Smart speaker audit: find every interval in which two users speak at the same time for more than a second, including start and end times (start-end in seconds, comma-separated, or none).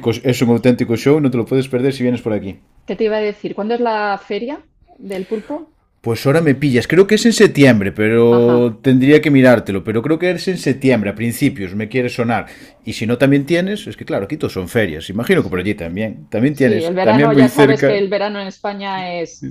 16.5-18.0